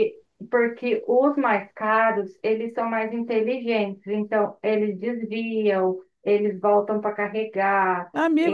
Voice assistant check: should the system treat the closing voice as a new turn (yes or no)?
yes